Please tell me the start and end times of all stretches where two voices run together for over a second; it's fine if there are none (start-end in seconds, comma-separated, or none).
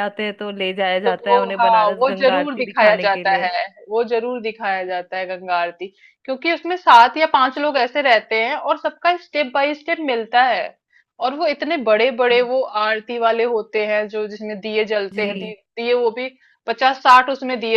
1.1-3.5